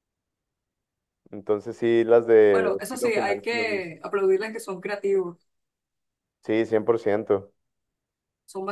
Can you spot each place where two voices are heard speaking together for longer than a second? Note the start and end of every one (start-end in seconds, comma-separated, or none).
2.5-4.0